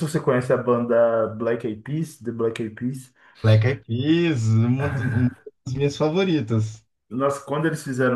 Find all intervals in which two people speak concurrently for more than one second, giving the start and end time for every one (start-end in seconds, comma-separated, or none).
none